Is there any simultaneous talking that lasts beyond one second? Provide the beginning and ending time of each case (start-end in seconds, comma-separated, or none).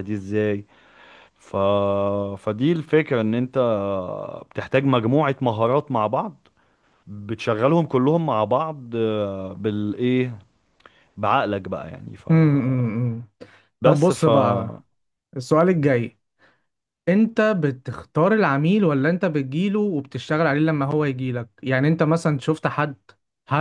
none